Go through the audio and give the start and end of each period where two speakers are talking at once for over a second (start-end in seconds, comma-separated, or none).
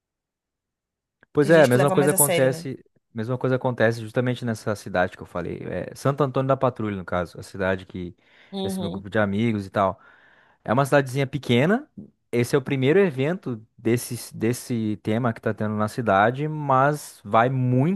1.4-2.7